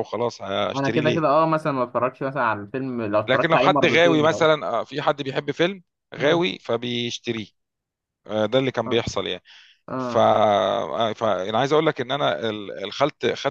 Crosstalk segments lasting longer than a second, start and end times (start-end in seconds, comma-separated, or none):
3.3-4.5